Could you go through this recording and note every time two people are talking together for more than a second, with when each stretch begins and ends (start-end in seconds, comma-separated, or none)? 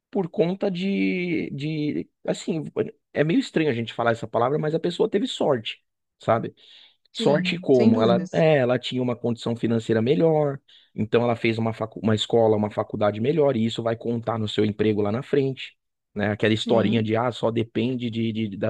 7.1-8.4